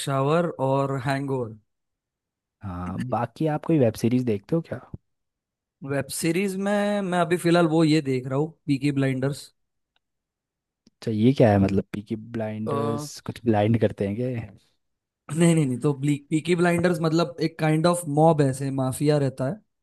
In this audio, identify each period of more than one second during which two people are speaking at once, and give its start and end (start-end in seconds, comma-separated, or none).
none